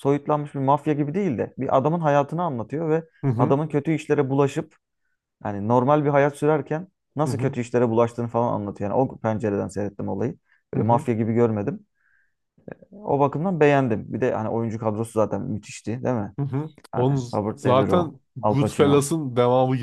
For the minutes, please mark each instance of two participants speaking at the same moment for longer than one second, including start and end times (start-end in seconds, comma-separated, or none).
16.9-19.1